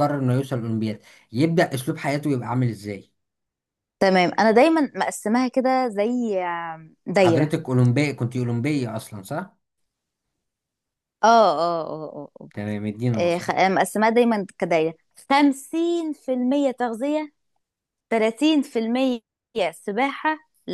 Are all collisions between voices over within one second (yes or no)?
yes